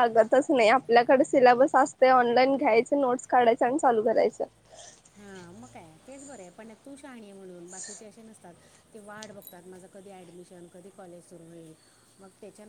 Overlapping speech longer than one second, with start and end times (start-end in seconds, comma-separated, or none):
none